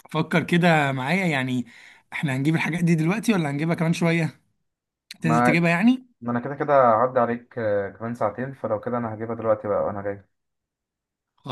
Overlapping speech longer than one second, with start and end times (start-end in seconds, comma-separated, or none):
none